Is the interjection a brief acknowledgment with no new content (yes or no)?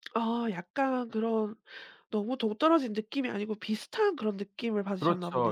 no